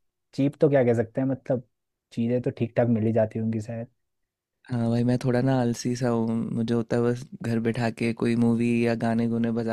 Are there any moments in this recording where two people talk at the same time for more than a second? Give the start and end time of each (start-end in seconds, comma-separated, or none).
none